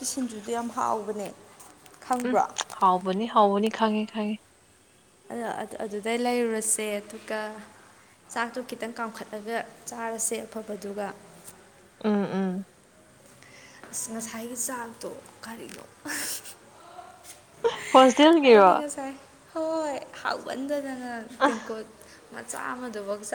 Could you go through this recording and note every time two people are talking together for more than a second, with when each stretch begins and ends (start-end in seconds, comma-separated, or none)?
none